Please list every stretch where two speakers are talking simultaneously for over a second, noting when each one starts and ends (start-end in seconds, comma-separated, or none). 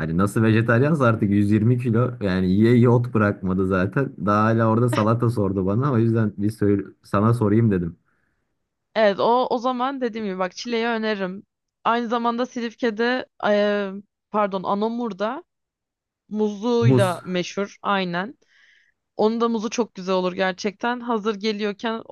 none